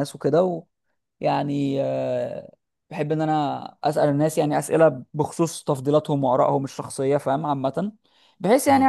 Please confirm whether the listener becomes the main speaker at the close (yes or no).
no